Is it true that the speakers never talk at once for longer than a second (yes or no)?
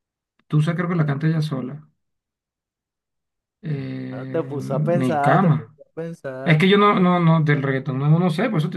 no